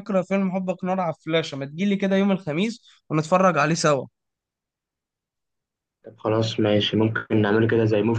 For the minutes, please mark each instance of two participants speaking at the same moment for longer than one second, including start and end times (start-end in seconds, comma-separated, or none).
none